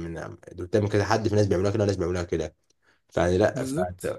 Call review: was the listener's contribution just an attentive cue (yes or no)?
yes